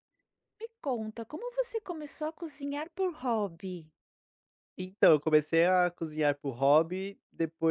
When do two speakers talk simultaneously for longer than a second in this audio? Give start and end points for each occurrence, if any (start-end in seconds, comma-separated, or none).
none